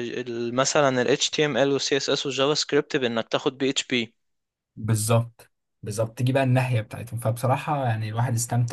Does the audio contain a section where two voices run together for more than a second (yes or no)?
no